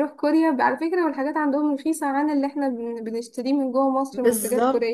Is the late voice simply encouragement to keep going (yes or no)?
no